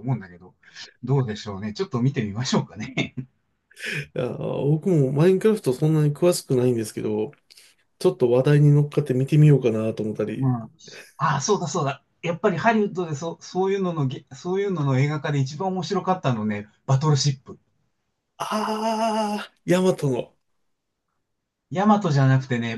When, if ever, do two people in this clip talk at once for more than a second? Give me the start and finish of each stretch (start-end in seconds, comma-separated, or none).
none